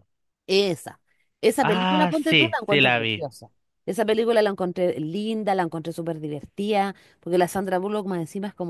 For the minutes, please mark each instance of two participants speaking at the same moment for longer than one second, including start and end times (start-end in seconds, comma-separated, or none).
1.7-3.3